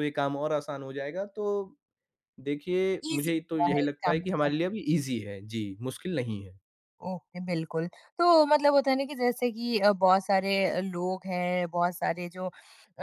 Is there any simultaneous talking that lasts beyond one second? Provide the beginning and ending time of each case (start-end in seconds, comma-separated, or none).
3.1-4.5